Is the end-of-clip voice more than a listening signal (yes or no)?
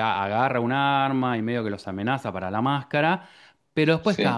no